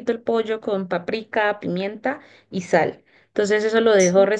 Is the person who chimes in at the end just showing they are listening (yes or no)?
yes